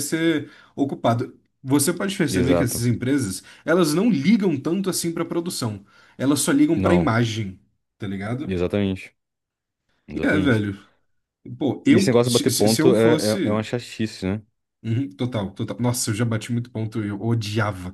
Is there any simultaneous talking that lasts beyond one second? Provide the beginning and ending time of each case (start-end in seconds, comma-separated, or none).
11.9-13.7